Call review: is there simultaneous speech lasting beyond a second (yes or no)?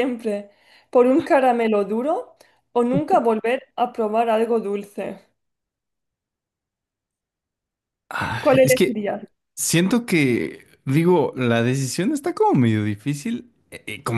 no